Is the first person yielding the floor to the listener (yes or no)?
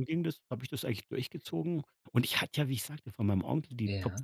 no